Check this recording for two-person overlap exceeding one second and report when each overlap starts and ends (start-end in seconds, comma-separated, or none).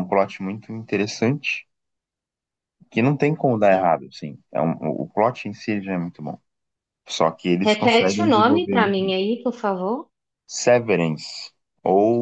7.6-9.1